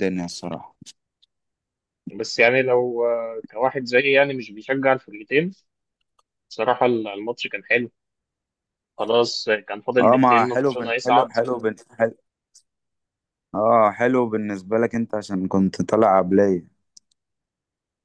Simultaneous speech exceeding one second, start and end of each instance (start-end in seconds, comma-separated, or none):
10.0-11.3